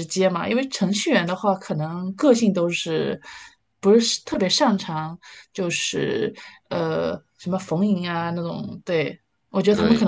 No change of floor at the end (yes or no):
yes